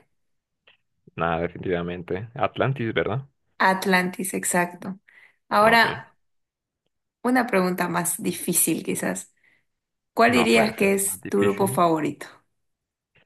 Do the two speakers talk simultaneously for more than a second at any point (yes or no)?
yes